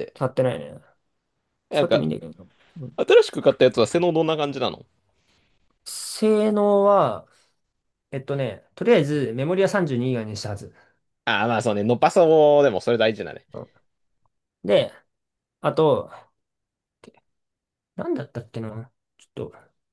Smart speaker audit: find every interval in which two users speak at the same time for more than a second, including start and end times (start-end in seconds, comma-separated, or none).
none